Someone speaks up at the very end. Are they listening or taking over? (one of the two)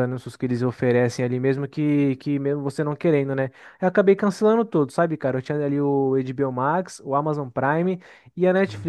listening